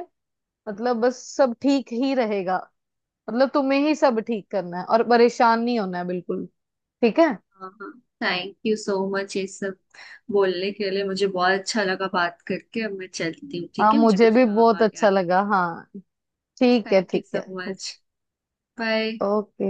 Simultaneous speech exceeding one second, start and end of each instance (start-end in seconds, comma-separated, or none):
13.8-15.1